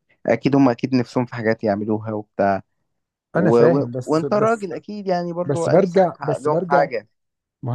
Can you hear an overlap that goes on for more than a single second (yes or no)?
yes